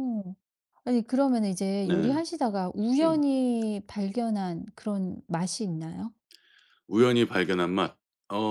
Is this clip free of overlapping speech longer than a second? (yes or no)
yes